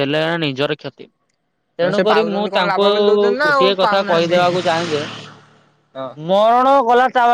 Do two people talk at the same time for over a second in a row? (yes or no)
yes